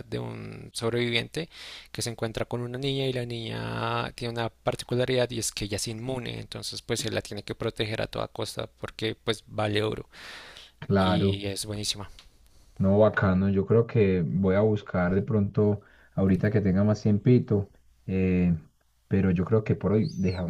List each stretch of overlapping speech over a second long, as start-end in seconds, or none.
none